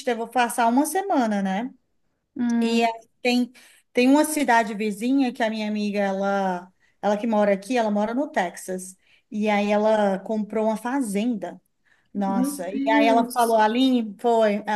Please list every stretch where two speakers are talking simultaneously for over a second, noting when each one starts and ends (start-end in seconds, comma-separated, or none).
12.1-13.6